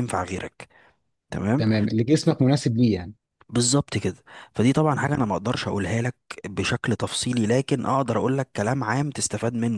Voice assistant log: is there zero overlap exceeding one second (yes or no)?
yes